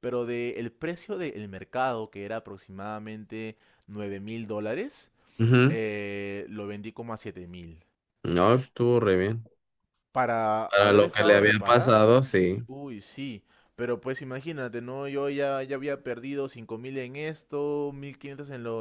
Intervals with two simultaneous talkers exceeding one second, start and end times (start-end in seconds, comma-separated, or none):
10.7-12.3